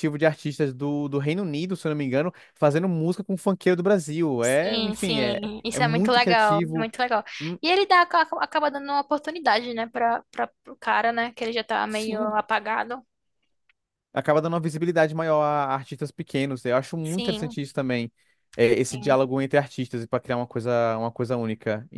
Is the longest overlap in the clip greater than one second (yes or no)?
yes